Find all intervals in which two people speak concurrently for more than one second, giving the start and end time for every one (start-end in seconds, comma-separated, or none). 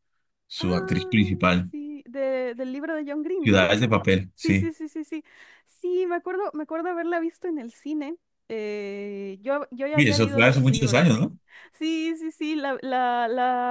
9.9-11.2